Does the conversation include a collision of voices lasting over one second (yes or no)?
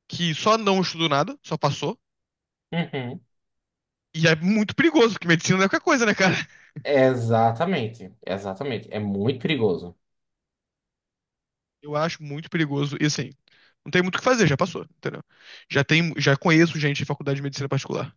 no